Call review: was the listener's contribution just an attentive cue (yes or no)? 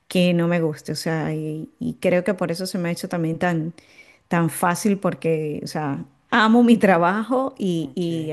yes